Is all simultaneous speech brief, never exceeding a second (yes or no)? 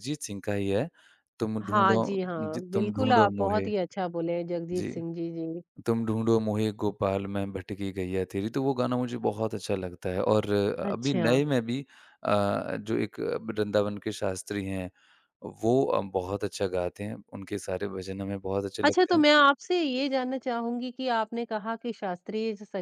no